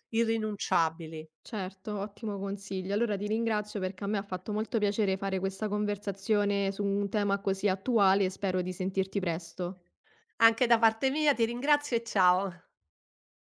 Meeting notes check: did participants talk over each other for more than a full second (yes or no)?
no